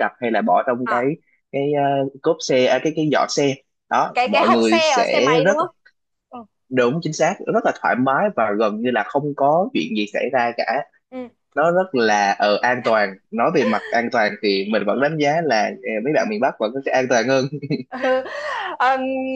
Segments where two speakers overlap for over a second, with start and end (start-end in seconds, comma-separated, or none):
4.1-5.6